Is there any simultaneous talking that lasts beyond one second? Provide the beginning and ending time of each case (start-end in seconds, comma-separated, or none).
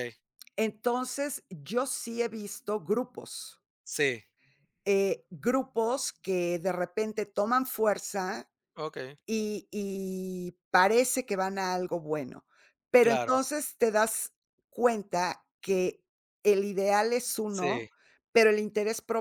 none